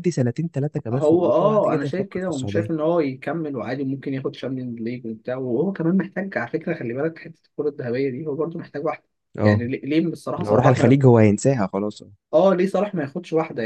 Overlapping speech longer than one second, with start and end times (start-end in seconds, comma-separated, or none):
0.9-2.7